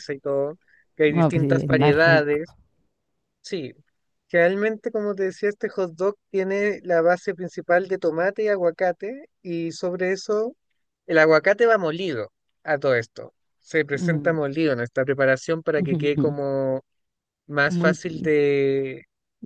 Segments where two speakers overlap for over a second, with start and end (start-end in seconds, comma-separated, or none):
1.1-2.4